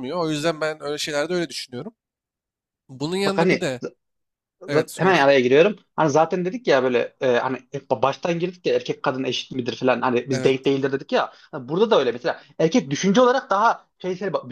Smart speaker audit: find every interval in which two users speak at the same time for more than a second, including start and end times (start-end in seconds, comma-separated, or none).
none